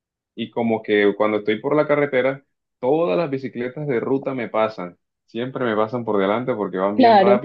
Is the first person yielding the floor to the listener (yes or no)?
no